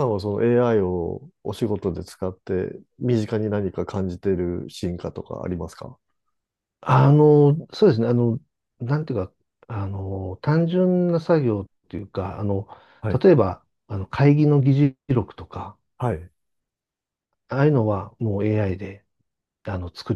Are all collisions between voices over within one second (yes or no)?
yes